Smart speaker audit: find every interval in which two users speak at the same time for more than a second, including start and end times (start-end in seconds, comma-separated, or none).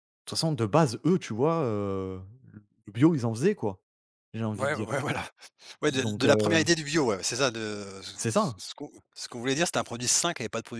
none